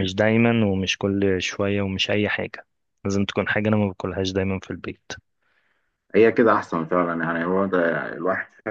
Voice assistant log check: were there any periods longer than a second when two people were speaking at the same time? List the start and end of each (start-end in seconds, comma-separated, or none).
none